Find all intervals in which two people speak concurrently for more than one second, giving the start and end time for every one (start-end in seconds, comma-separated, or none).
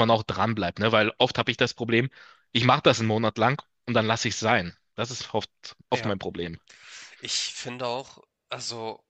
none